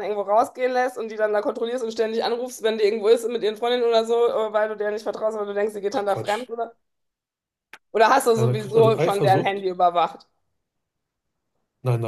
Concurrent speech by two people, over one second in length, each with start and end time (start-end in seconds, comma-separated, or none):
8.3-9.7